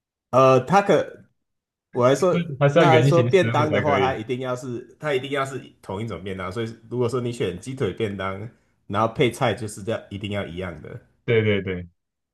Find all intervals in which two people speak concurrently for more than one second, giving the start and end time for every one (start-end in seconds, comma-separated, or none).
2.7-4.2